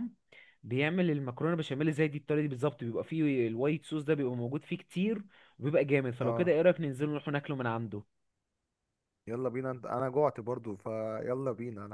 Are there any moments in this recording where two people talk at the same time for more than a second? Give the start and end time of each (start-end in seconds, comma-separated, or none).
none